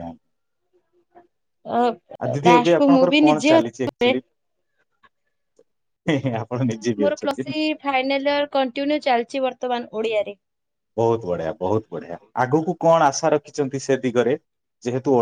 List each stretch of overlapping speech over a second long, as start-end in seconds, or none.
2.5-4.0